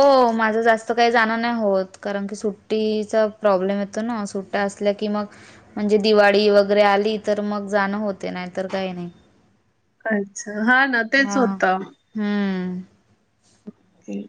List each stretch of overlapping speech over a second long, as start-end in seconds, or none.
none